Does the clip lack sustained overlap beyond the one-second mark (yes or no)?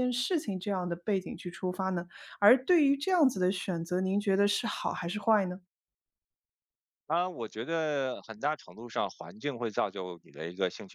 yes